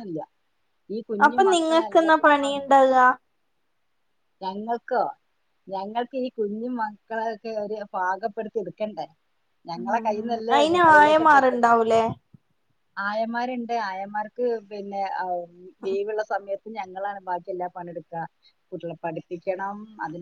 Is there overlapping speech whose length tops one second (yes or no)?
yes